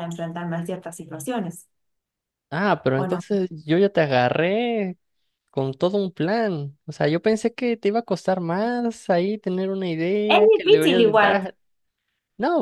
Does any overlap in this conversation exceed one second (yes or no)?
yes